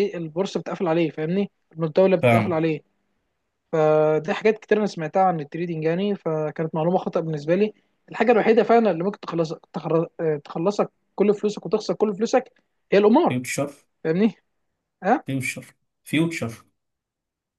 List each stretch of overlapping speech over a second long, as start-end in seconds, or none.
none